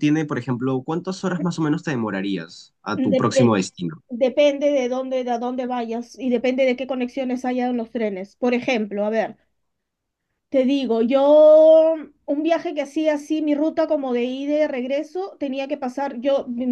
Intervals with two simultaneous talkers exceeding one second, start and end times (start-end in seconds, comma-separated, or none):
none